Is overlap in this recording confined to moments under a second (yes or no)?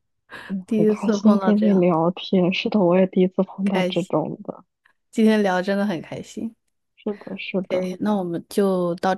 no